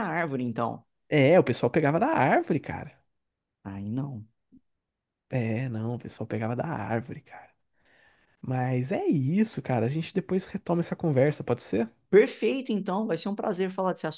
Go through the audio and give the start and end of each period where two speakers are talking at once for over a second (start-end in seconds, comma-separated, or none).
none